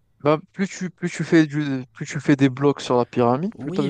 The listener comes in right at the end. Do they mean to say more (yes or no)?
yes